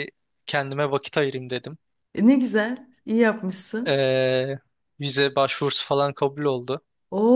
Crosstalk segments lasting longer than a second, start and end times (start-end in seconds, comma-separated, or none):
none